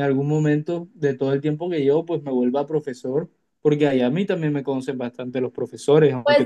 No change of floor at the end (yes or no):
no